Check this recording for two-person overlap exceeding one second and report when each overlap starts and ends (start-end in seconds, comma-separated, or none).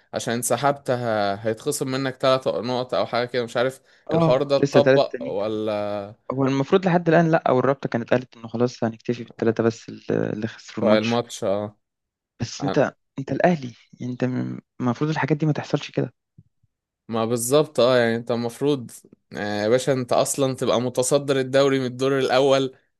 4.1-5.4